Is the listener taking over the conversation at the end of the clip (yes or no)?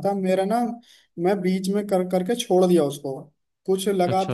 no